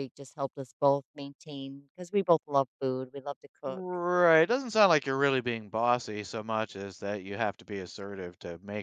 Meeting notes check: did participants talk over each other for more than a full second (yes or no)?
no